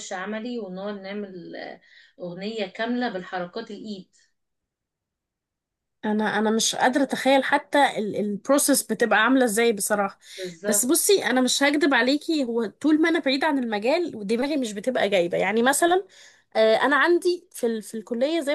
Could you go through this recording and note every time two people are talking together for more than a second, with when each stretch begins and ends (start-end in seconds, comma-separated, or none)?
none